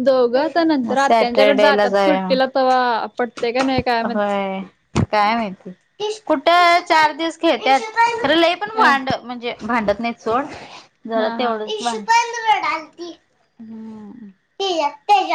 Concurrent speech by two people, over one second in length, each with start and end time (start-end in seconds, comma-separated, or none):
0.9-2.2